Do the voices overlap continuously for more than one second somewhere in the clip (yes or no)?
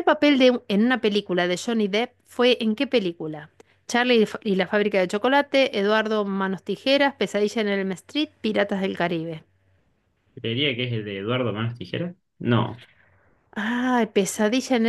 no